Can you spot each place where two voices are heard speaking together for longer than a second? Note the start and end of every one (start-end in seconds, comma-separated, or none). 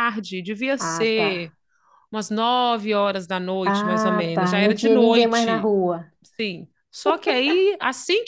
3.6-5.7